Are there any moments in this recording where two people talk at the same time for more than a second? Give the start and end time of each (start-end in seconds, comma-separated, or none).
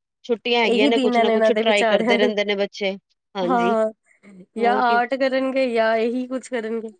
0.7-2.3